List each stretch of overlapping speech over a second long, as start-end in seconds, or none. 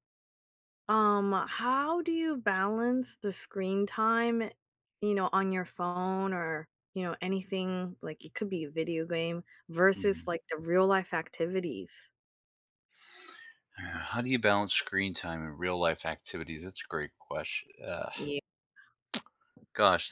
none